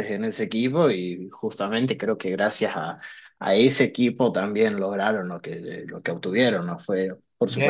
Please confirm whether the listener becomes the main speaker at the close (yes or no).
yes